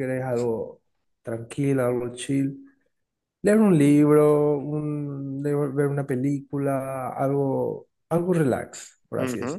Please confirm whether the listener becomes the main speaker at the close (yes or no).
yes